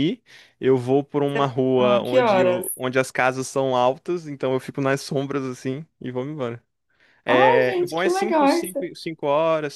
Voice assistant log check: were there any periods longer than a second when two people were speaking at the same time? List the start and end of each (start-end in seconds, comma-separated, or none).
1.3-2.7, 7.3-8.9